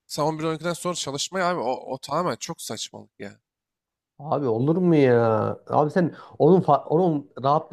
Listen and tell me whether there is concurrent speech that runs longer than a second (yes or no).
no